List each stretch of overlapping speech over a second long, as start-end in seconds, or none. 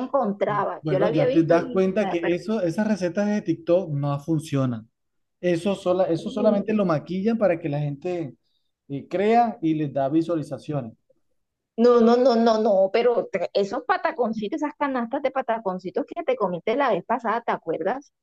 0.8-2.5